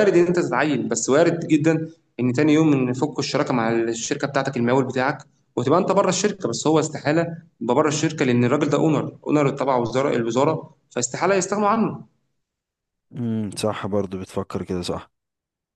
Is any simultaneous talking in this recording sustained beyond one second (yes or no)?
no